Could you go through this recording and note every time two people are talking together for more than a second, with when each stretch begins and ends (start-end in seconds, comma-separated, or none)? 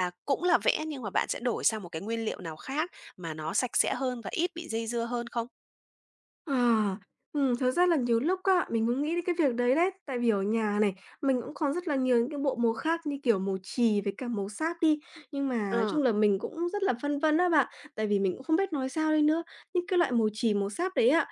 none